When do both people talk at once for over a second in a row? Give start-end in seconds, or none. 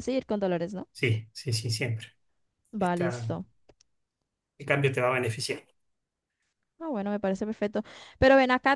none